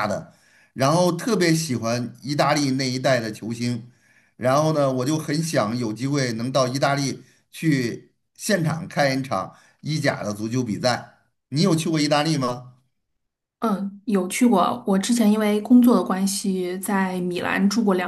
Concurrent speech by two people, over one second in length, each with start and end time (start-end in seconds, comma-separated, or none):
none